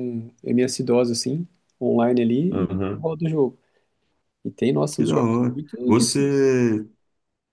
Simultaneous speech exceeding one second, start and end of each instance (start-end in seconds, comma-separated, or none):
4.9-6.5